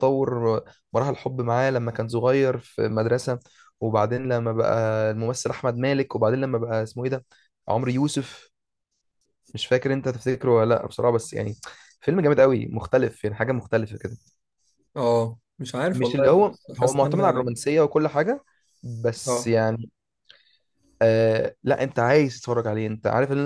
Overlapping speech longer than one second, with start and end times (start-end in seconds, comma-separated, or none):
15.9-17.4